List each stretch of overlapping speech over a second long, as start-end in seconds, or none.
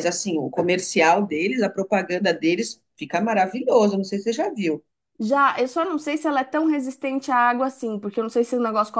none